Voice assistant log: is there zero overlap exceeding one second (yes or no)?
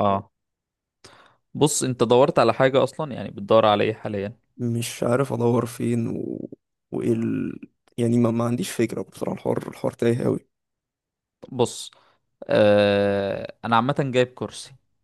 yes